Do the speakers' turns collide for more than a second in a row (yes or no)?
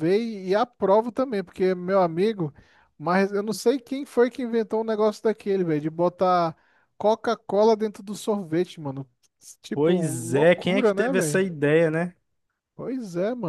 yes